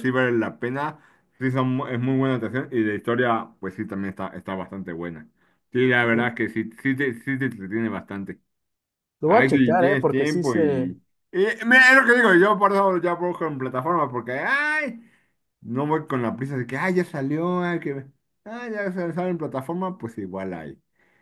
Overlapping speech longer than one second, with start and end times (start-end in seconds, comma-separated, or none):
9.2-11.0